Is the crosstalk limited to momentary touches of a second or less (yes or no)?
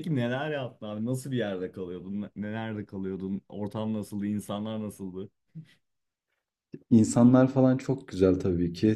yes